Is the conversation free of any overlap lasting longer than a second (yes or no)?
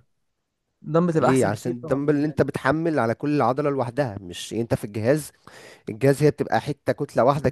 no